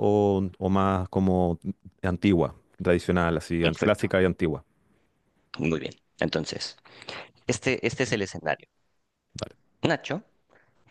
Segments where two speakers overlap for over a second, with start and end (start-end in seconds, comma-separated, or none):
none